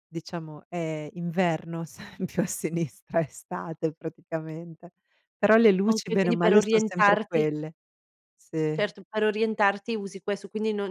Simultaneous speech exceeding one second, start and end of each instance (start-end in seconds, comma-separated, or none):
5.9-7.5